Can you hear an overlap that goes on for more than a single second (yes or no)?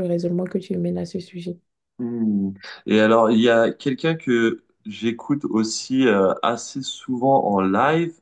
no